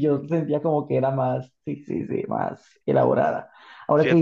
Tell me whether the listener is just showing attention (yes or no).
yes